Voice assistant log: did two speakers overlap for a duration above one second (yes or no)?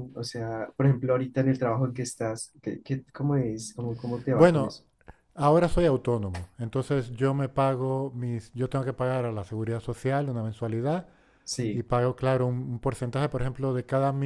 no